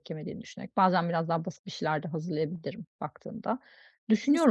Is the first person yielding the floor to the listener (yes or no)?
no